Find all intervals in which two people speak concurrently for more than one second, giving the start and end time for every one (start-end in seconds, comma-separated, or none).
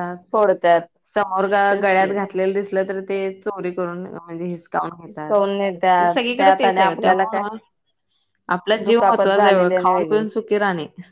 5.6-7.4, 8.8-10.2